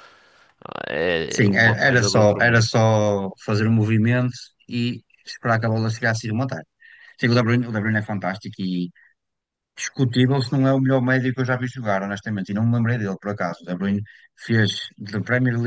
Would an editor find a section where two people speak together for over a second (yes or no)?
yes